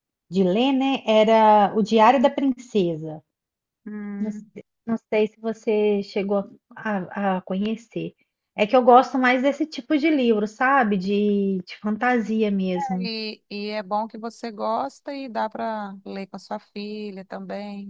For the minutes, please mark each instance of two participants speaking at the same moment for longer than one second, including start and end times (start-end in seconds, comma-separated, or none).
none